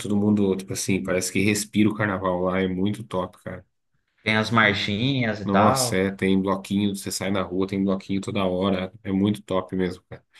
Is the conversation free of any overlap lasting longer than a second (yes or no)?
yes